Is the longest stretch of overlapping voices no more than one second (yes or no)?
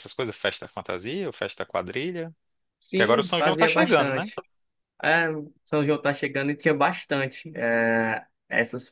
no